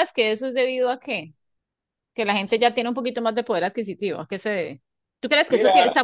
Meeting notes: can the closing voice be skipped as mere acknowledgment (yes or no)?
yes